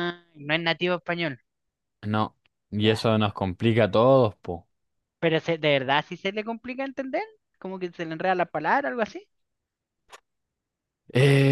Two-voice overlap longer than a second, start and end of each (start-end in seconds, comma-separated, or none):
none